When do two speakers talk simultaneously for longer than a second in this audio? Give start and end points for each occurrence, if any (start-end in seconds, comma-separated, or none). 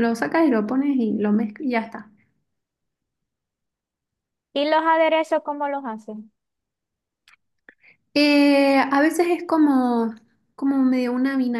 none